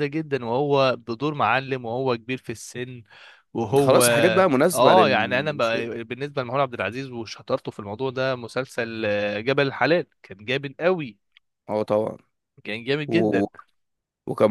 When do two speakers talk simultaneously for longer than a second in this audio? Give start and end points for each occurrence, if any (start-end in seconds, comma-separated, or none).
4.7-5.9